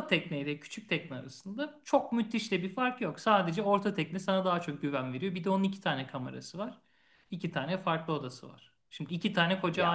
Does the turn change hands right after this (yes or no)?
no